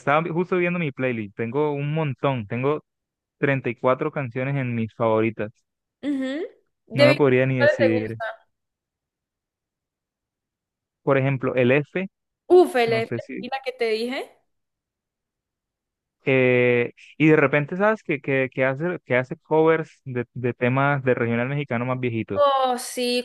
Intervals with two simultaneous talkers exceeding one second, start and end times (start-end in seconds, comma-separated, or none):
6.9-8.2